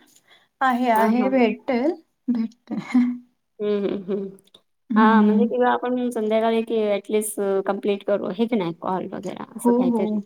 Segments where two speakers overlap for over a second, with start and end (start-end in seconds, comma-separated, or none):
none